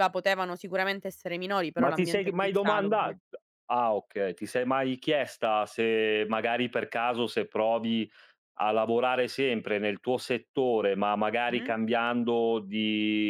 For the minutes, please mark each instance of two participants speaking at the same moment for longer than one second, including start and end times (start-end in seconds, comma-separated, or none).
1.8-3.2